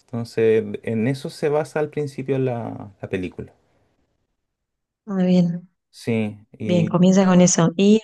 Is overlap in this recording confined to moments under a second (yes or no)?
yes